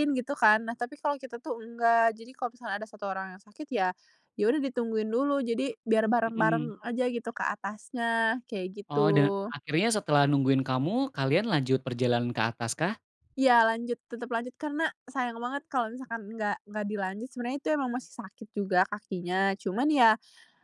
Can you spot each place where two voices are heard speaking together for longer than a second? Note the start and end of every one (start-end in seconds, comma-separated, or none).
none